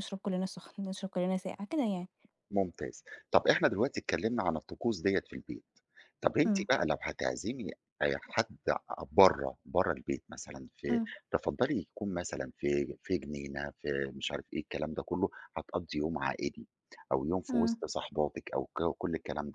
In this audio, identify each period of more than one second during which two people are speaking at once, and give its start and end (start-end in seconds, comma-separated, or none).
none